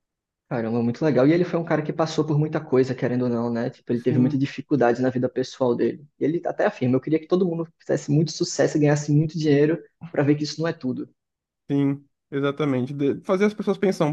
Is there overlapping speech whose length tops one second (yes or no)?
no